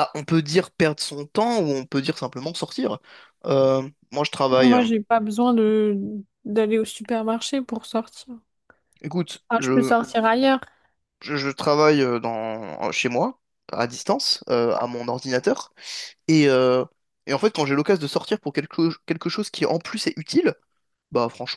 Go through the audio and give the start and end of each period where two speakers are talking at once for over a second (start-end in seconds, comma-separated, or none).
none